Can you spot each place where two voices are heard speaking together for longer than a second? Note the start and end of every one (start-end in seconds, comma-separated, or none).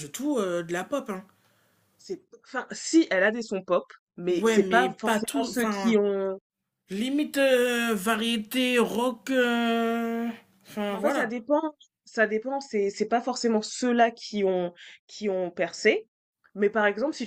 4.3-6.0